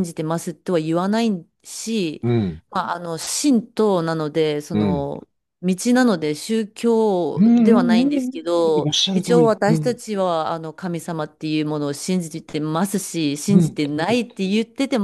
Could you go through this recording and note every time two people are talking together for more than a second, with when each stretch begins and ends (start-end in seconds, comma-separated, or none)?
7.4-10.0